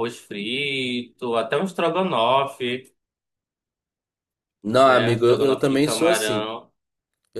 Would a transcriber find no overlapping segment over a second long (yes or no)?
no